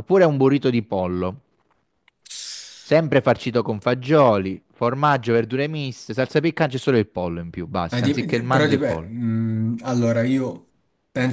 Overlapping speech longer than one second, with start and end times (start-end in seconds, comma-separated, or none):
7.9-9.1